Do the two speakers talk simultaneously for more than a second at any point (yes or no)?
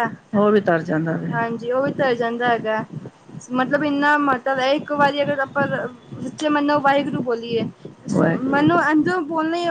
no